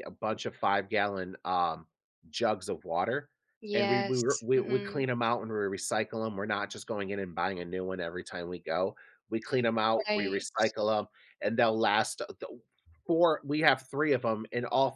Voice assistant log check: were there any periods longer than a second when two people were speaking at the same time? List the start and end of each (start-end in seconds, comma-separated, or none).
3.8-5.0